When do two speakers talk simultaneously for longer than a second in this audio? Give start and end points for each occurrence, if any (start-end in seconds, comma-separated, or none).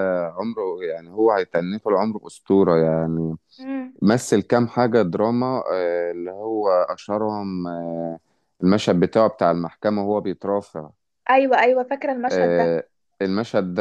none